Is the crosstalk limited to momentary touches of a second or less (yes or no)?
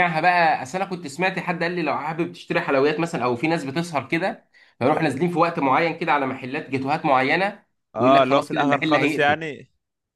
no